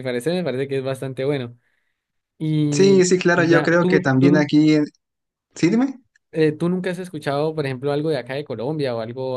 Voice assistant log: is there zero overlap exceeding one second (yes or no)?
no